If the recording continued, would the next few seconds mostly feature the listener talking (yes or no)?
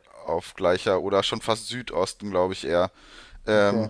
no